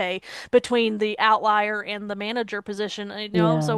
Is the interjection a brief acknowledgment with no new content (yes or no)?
yes